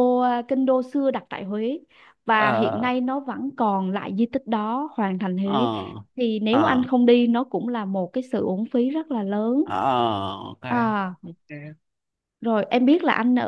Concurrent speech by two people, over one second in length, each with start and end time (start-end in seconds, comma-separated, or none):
none